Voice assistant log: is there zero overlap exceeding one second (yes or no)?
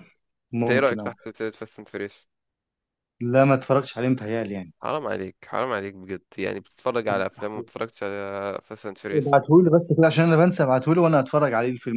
yes